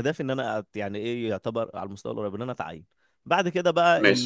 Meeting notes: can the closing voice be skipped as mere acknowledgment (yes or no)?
yes